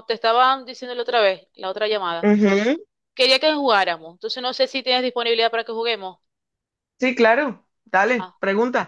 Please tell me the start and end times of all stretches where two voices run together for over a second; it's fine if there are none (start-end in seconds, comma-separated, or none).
none